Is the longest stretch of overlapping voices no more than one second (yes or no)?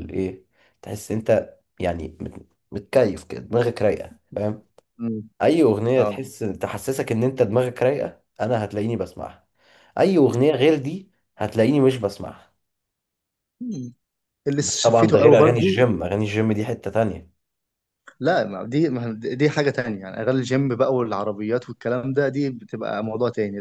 no